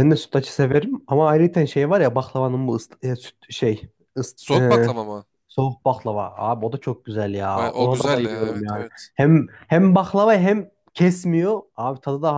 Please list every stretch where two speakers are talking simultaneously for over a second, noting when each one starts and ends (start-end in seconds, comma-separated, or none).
7.5-9.1